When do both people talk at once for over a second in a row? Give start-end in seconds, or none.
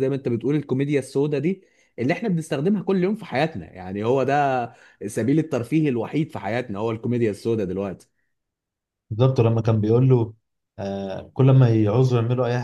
none